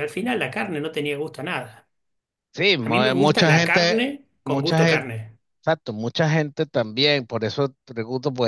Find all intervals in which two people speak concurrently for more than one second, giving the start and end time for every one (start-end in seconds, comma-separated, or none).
2.8-5.1